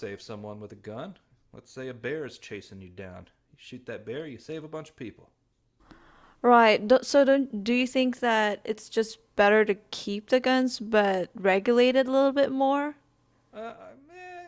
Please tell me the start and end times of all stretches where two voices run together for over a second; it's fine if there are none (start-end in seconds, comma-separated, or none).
none